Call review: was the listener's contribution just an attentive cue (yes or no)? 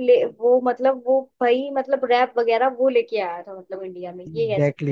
no